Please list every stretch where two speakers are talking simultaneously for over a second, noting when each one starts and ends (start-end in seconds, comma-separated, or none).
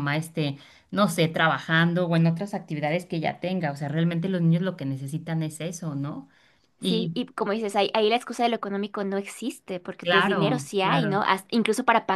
10.0-11.3